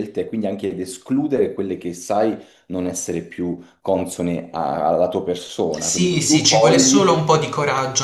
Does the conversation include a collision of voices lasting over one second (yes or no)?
yes